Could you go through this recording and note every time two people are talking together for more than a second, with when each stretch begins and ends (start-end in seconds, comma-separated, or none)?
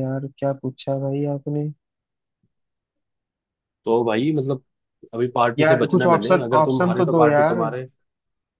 5.6-7.6